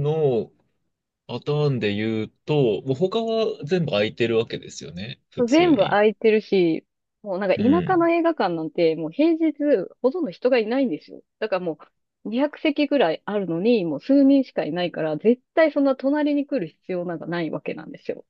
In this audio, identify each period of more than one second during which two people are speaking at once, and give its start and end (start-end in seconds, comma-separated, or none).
none